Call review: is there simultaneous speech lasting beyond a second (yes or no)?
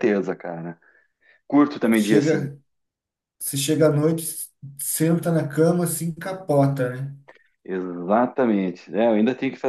no